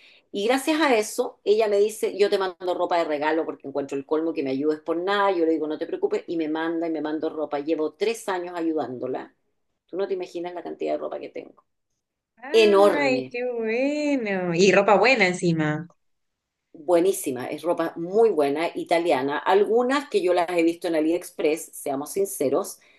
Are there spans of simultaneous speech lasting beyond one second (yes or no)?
no